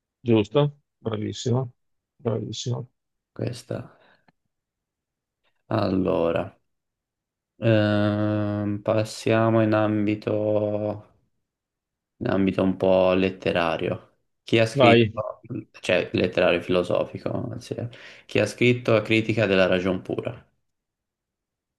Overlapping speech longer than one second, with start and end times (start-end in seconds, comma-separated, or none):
none